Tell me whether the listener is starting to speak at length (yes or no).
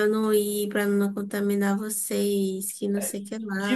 yes